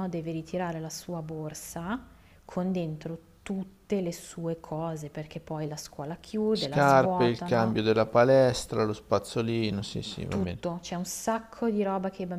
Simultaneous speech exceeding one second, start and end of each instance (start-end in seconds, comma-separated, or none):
6.5-7.7